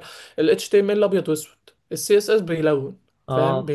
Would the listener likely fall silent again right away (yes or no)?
yes